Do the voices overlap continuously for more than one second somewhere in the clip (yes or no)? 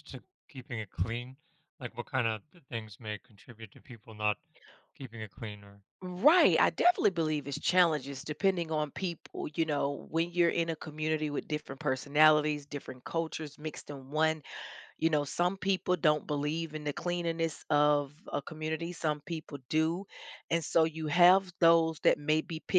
no